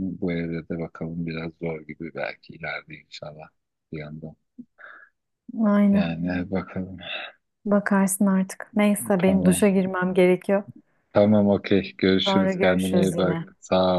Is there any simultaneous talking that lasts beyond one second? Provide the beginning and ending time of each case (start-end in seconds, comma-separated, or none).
12.3-13.5